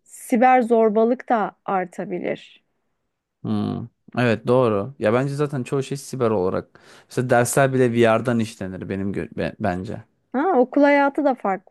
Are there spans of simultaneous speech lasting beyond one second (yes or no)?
no